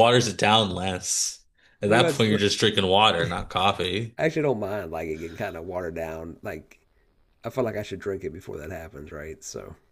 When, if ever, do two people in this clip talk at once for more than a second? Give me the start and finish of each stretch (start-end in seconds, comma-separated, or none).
none